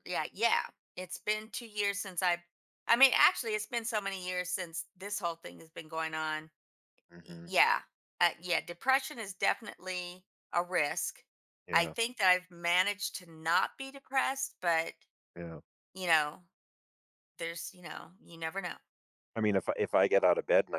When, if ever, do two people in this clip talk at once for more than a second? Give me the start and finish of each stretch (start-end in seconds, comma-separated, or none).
none